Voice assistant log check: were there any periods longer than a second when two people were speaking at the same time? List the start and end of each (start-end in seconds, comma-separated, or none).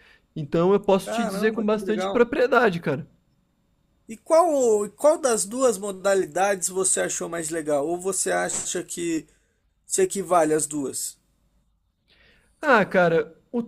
1.0-2.3